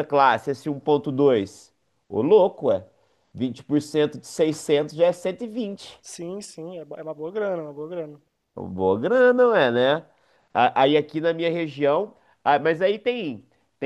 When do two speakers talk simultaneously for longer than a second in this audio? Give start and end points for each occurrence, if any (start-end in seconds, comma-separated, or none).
none